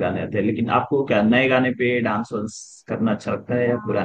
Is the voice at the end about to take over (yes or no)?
yes